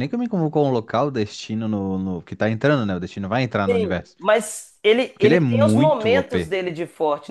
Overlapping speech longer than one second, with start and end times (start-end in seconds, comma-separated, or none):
5.1-6.6